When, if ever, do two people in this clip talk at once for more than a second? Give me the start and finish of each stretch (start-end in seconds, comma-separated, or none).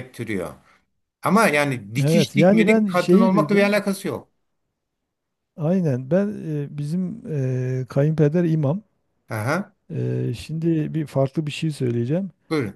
2.0-3.8